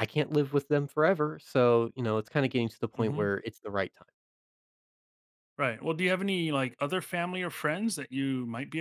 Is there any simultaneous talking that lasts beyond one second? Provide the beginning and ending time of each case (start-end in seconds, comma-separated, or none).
none